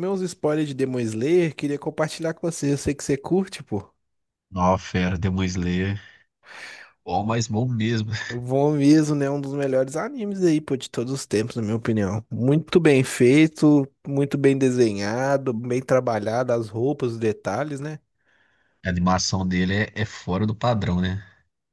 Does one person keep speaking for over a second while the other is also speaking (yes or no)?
no